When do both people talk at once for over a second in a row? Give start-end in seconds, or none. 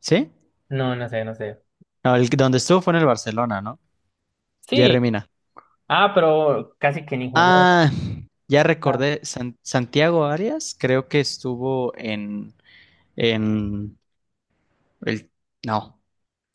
none